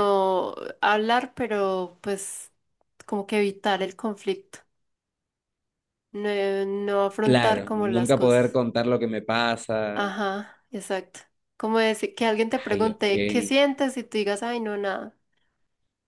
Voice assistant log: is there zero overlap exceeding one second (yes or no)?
no